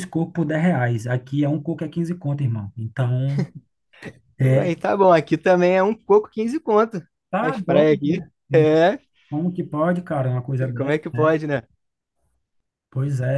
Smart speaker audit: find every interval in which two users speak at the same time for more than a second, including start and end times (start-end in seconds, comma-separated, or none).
7.4-8.8